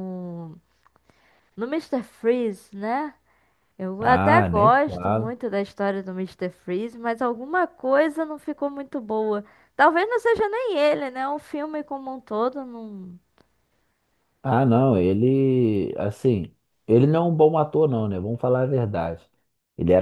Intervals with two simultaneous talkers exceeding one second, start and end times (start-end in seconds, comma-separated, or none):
4.0-5.3